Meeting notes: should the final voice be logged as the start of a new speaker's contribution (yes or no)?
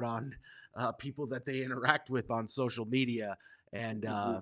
no